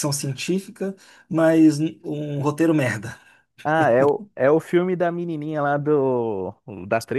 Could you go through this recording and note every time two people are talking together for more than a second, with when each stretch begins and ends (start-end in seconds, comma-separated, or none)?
none